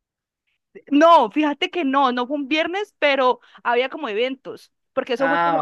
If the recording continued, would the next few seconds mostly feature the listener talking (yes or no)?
no